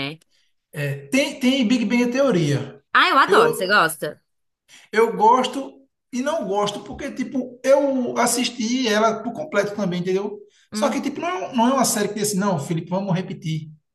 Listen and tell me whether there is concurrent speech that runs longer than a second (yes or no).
no